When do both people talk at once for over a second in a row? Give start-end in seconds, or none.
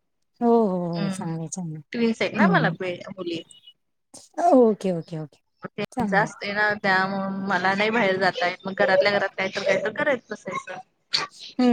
none